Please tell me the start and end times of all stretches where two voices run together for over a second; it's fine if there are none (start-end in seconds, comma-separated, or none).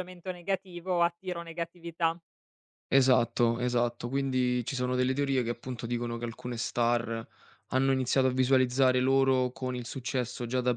none